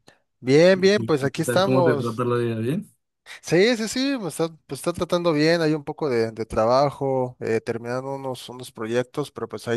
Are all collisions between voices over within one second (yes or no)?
no